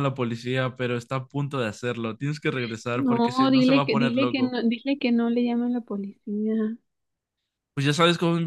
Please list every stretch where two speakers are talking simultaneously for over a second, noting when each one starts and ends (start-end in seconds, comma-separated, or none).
2.9-4.5